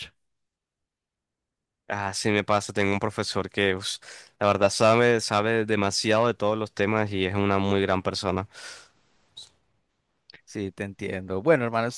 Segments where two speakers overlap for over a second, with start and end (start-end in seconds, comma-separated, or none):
none